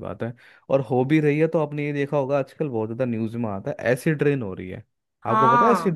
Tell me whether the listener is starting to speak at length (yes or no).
yes